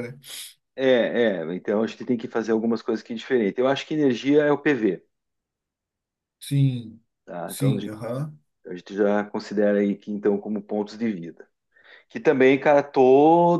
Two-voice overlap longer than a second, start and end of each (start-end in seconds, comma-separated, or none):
none